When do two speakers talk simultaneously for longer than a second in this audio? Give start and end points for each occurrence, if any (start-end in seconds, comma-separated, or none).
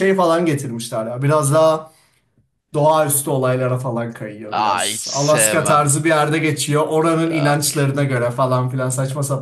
4.6-5.9